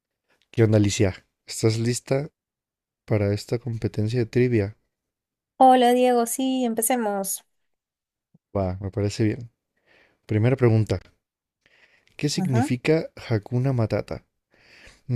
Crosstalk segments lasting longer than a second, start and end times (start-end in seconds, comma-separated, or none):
none